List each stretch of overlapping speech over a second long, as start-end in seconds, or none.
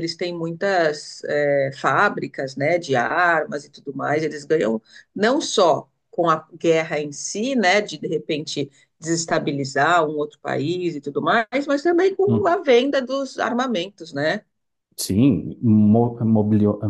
none